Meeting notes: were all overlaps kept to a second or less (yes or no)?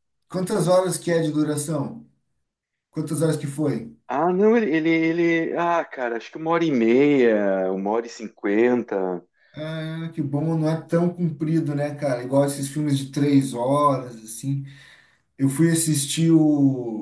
yes